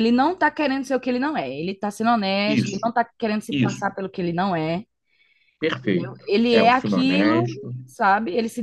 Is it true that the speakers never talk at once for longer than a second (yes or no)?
no